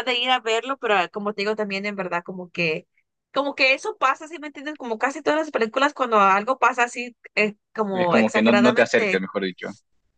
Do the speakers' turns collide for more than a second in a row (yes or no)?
yes